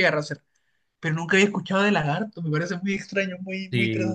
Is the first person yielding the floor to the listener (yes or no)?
yes